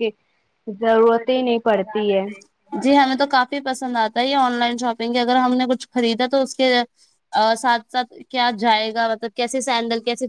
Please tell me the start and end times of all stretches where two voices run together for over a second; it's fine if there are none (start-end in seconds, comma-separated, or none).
none